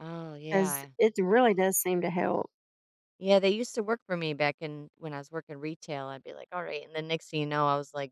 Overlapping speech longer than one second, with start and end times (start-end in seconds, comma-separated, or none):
none